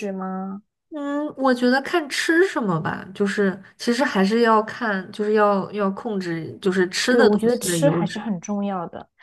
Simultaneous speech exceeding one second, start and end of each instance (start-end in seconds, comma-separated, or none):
7.1-8.3